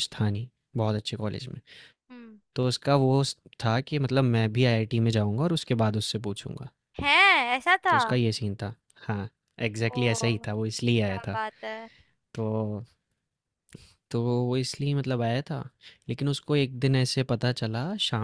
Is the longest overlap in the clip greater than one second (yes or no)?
no